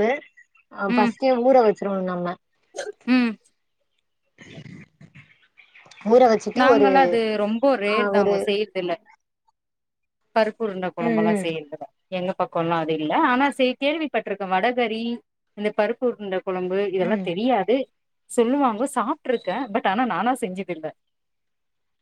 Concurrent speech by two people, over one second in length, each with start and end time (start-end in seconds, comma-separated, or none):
none